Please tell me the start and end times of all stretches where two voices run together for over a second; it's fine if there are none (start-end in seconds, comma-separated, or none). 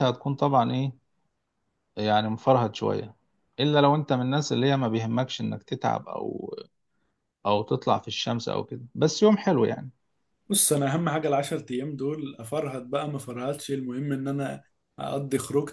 none